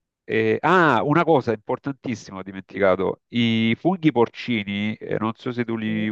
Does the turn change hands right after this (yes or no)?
no